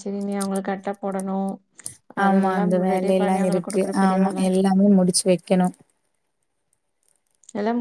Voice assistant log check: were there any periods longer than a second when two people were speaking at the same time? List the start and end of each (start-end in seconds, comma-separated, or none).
2.2-4.4